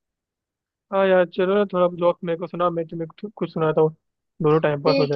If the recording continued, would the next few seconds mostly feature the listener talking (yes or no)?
yes